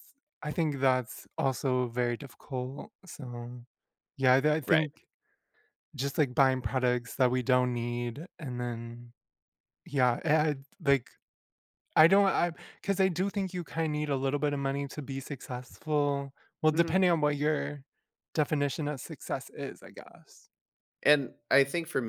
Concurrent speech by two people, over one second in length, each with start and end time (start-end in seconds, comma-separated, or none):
none